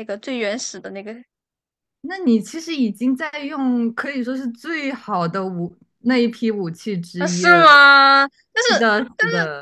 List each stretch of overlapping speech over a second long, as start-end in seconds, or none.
none